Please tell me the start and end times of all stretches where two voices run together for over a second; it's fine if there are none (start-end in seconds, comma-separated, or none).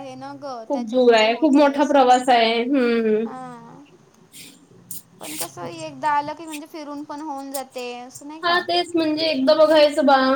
0.7-2.1